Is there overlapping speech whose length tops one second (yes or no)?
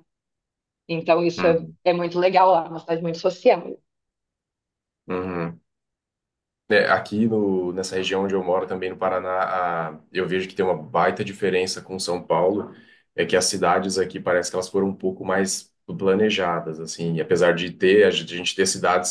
no